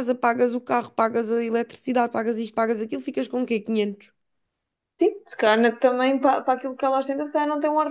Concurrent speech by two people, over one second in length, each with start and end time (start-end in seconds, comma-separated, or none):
none